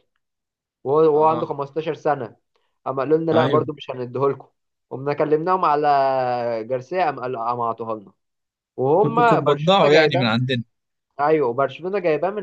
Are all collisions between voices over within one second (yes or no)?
no